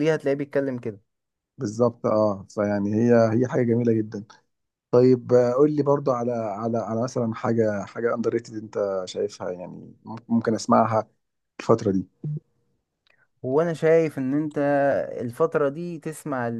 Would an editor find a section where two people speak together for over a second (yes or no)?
no